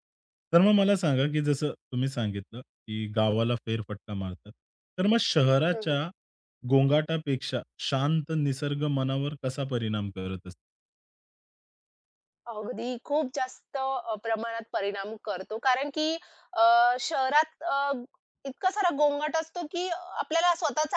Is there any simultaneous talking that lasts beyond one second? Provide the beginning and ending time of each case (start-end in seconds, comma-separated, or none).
none